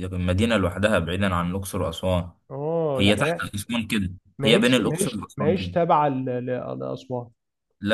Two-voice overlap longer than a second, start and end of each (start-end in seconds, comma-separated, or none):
4.4-5.7